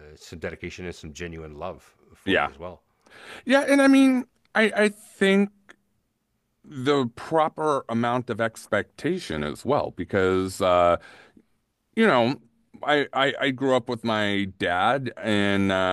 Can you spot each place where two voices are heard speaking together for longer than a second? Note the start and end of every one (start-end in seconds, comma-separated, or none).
none